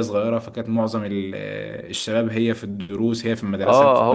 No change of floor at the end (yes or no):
no